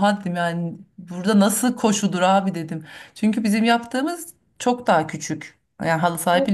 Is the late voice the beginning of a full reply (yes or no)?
yes